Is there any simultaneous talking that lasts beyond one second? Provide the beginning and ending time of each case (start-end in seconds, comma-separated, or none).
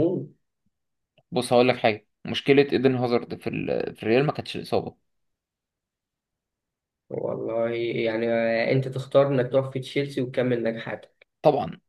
none